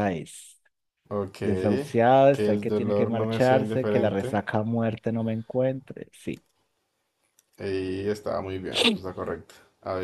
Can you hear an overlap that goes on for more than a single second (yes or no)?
yes